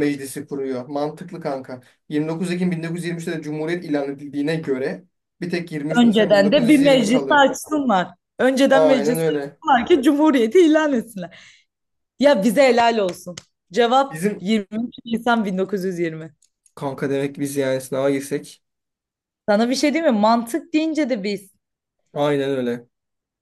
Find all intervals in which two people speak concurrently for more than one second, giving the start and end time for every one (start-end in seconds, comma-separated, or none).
6.0-7.5